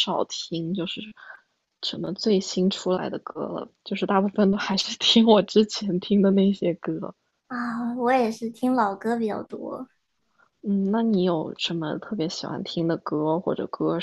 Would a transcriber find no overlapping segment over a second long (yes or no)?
yes